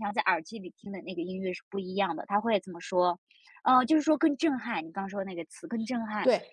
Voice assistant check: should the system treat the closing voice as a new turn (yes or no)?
yes